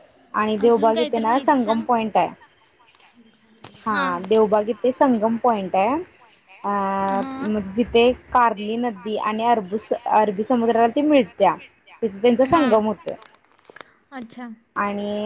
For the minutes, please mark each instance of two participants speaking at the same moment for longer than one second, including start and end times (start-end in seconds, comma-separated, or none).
0.6-1.9